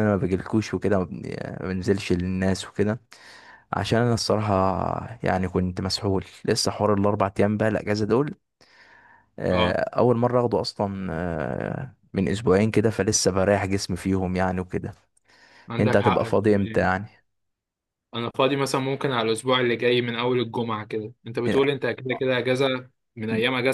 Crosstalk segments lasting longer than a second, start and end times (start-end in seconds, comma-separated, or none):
15.8-17.1